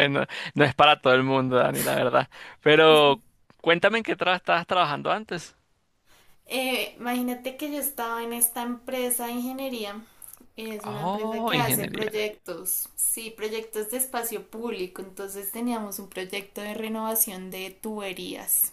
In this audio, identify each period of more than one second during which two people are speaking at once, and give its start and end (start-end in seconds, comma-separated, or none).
10.8-12.3